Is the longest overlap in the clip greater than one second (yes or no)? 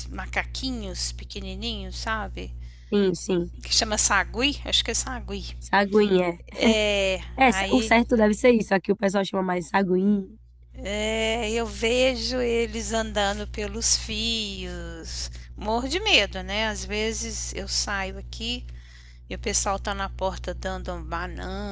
no